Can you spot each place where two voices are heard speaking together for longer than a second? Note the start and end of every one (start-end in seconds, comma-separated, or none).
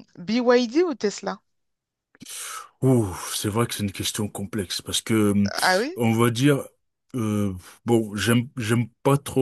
none